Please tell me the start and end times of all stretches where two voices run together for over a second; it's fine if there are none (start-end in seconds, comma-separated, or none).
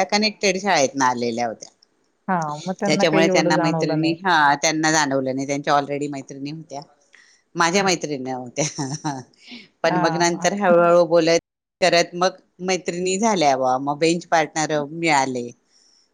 2.9-4.1